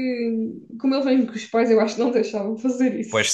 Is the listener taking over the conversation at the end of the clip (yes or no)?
yes